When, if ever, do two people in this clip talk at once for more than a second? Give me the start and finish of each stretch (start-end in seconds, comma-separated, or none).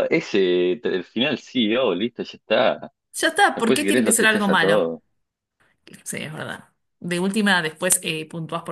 3.5-4.9